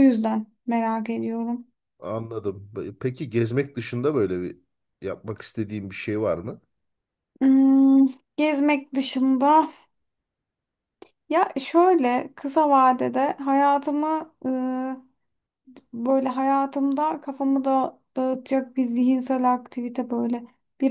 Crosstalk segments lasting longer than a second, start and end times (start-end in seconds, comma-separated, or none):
none